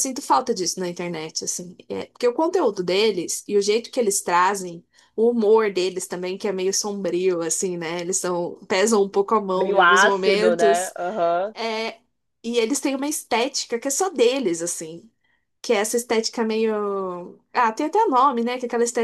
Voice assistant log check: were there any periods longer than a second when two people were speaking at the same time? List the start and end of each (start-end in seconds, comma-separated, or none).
9.6-10.9